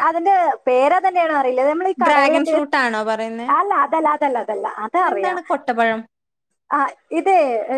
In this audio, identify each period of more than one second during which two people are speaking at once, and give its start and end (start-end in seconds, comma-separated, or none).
2.0-3.5